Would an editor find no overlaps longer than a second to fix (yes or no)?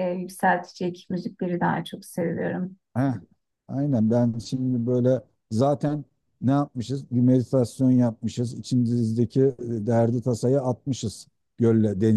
yes